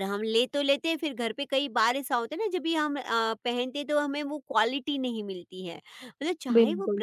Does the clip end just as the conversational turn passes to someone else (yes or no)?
no